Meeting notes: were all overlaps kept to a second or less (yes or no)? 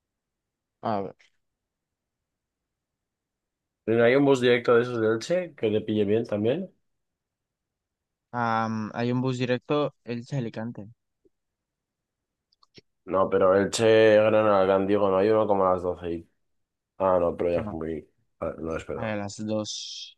yes